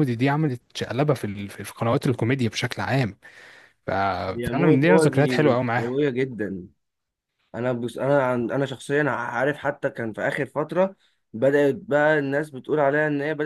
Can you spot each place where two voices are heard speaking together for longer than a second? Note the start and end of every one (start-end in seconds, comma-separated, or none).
4.5-5.9